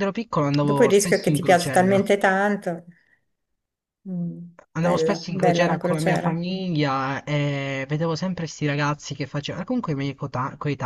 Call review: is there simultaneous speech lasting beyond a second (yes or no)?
yes